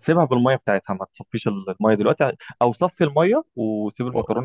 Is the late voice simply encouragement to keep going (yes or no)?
yes